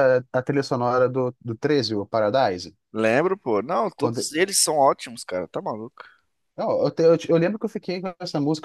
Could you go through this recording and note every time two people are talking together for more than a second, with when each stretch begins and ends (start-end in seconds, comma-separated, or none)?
none